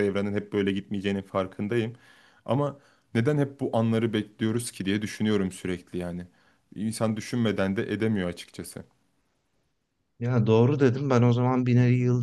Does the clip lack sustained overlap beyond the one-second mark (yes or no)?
yes